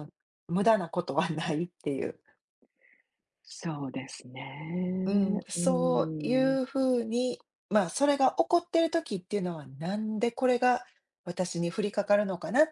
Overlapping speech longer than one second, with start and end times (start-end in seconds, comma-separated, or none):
5.0-6.6